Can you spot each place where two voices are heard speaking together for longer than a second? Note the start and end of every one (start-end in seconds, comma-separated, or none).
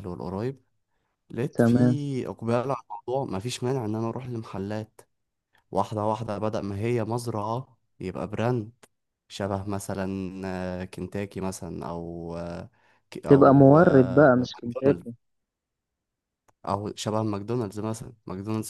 13.3-15.1